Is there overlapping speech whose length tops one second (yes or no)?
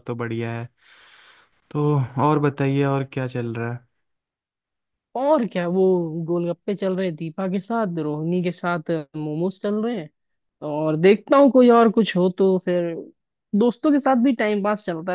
no